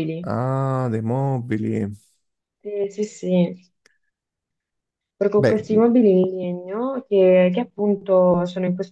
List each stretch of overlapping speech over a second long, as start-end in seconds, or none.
none